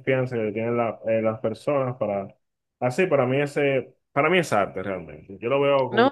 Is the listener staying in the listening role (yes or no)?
no